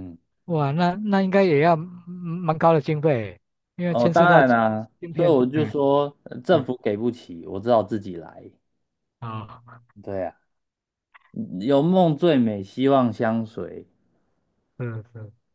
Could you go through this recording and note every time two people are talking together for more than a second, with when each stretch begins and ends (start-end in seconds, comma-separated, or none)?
3.8-5.7